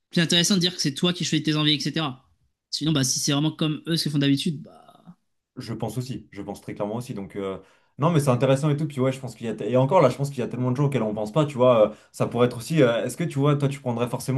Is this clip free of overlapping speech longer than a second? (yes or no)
yes